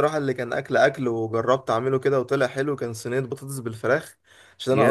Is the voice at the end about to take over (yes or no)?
no